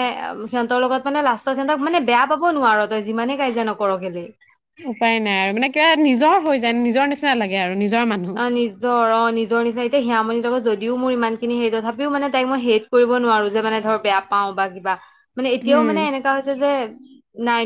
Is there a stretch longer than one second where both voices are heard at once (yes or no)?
no